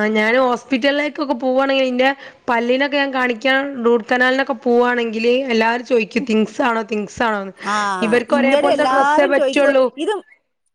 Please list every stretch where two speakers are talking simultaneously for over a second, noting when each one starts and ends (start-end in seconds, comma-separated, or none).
8.1-9.8